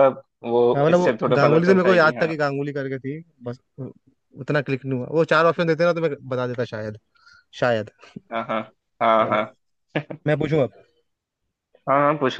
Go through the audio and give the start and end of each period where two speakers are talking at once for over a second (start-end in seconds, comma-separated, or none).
0.7-2.3